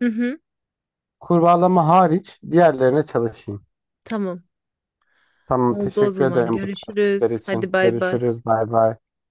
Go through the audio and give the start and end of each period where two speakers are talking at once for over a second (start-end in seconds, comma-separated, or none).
5.7-8.2